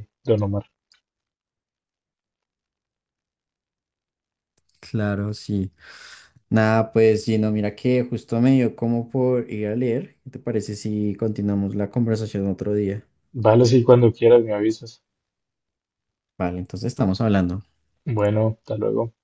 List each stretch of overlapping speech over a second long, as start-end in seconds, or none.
none